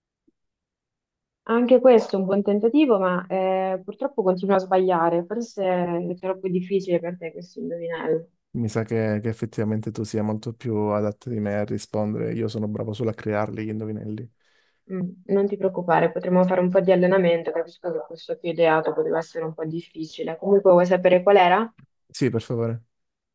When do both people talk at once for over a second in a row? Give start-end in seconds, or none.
none